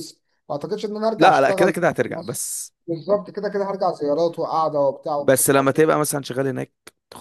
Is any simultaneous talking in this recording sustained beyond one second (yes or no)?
yes